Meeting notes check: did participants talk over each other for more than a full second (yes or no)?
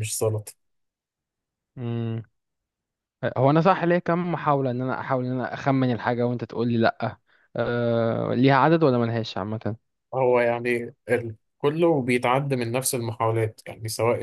no